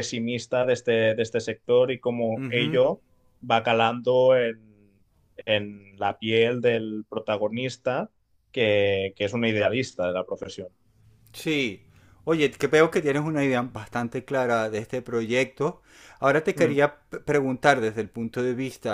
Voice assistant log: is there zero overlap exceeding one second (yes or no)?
yes